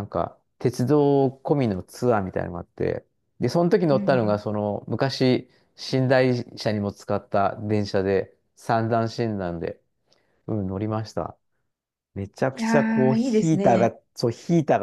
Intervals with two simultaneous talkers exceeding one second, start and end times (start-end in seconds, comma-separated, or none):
12.5-13.9